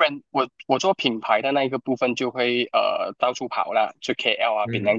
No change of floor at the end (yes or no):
no